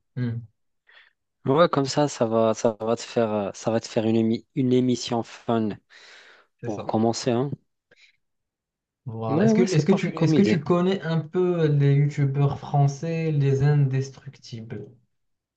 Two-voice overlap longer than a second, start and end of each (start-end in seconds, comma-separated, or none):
9.3-10.6